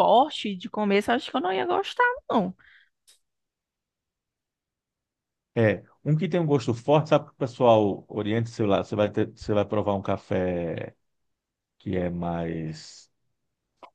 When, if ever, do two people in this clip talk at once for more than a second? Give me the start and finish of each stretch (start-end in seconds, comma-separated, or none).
none